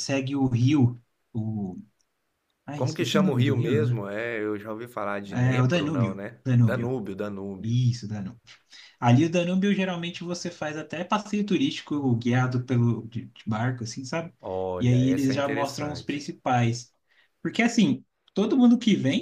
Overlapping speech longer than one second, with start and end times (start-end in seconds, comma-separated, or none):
2.8-4.0, 5.3-7.0, 14.8-16.2